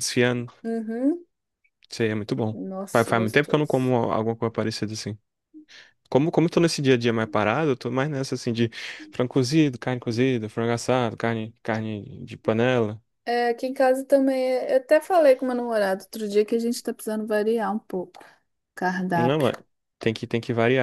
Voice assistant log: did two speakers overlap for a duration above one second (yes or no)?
yes